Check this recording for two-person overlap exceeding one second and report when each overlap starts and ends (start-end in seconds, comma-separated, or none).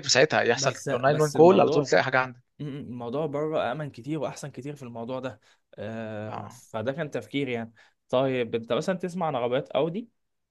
0.5-1.9